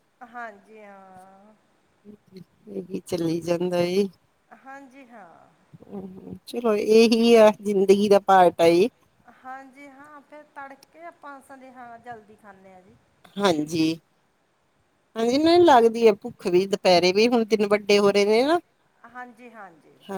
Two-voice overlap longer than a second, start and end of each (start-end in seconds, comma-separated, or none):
none